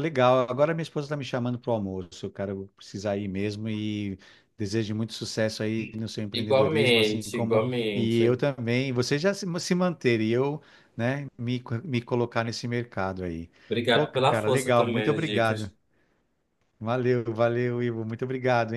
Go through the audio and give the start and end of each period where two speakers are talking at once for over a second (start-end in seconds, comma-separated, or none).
6.3-8.4, 13.9-15.7